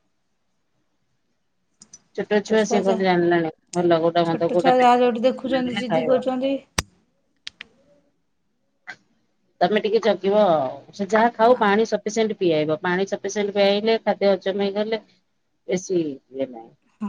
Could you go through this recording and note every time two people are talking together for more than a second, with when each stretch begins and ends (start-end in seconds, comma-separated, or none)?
4.3-6.2